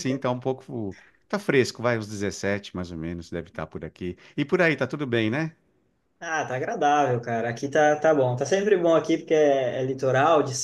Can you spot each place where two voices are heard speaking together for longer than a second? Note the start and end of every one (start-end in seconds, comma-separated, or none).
none